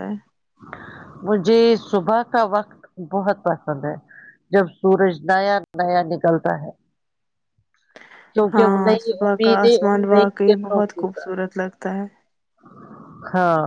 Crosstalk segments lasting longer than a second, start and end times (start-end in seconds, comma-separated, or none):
8.5-11.4